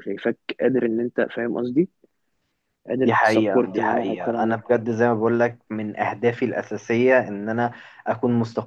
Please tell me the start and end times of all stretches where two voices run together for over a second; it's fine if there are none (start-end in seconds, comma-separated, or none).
3.0-4.6